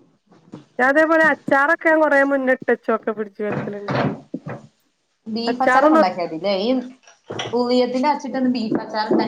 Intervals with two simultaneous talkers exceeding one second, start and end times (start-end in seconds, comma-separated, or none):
none